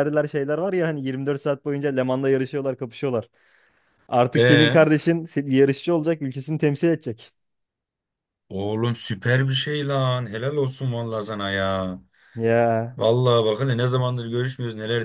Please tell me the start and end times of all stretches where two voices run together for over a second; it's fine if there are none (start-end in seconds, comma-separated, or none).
none